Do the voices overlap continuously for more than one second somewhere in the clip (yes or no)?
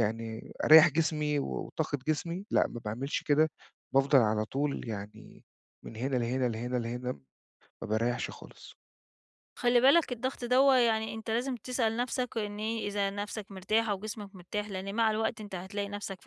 no